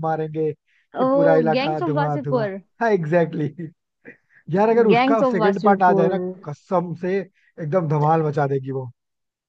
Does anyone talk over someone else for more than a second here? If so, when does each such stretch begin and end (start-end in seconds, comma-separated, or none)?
0.9-2.5, 4.9-6.1